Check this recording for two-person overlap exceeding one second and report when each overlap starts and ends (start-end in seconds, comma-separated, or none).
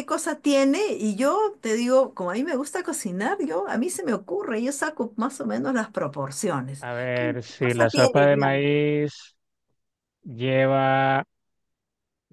6.8-8.6